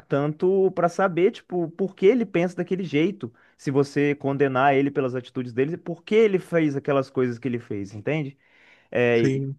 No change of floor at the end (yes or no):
yes